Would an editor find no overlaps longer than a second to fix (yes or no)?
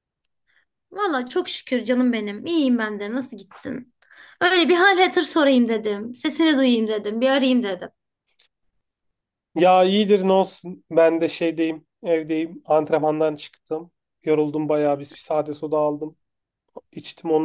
yes